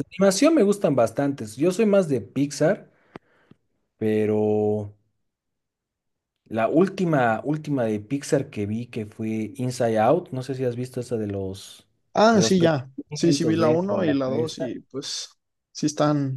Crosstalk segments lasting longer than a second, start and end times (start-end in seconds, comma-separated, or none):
12.3-14.7